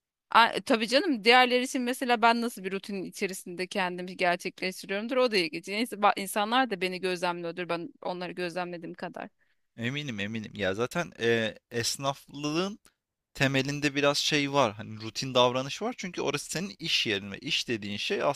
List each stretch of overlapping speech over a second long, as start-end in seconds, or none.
none